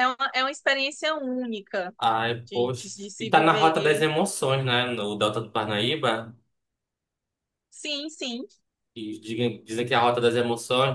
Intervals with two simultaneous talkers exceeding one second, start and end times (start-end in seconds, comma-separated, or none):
2.5-4.1